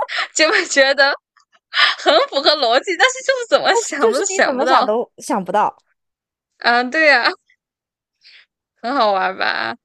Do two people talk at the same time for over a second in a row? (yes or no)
yes